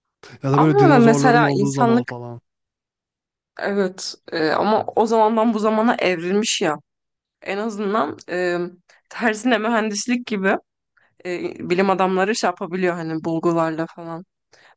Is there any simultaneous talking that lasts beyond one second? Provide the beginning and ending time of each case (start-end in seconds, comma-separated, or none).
0.5-2.1